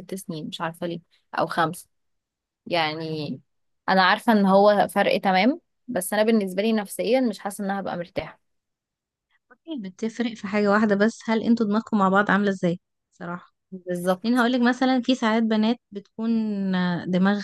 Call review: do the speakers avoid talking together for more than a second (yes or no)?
yes